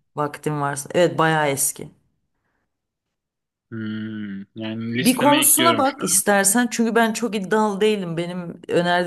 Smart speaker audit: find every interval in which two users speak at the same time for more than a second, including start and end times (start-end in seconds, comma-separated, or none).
5.0-6.2